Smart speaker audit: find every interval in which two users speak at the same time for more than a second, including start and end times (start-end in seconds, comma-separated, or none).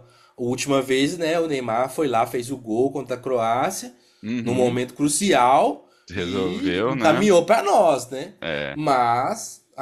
6.1-7.3